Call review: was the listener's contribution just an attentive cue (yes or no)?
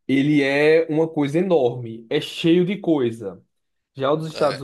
yes